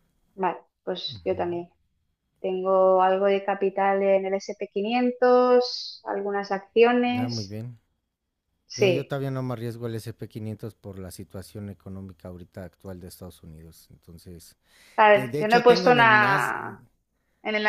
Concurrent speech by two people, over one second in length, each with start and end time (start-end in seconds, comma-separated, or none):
15.1-16.5